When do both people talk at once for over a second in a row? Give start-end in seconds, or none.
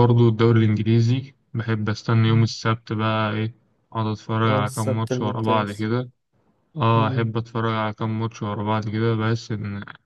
4.5-5.9